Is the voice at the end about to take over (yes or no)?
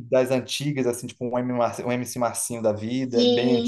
yes